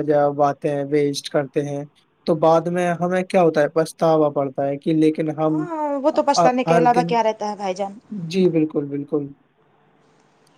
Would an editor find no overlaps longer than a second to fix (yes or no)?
yes